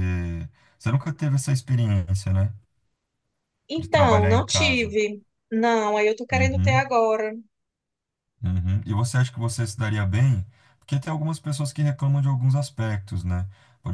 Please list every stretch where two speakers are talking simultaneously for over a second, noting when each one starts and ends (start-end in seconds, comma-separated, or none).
3.8-5.0